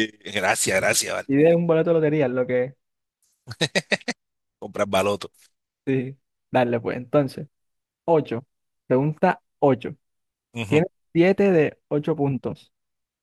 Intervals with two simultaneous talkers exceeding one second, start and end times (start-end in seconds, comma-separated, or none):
none